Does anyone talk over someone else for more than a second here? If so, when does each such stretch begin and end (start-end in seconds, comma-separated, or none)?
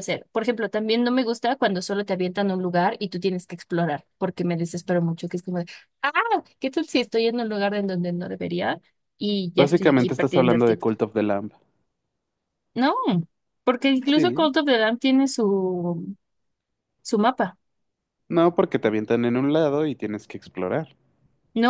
9.6-10.8